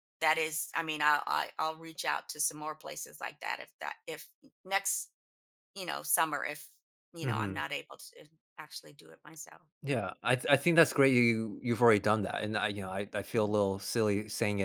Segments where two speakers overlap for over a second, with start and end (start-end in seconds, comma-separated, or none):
none